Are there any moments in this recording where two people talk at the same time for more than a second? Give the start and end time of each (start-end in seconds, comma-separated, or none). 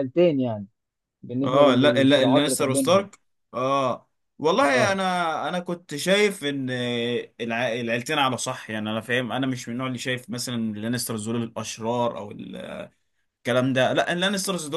1.4-3.1